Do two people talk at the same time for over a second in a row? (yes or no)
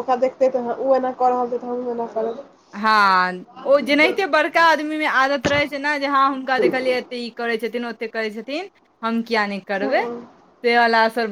no